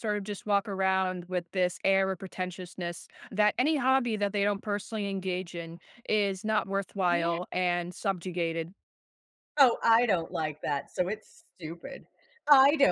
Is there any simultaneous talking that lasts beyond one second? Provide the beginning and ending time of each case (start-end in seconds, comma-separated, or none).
none